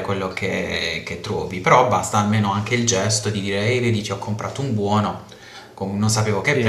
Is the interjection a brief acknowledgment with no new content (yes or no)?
yes